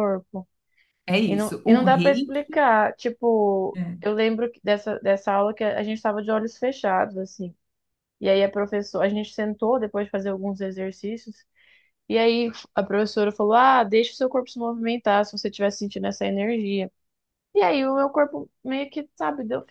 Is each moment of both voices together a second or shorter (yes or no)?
no